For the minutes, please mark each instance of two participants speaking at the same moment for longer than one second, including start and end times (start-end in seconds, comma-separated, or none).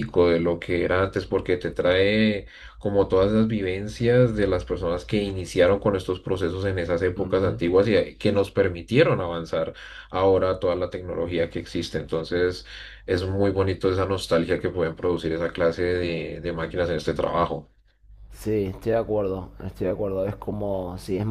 none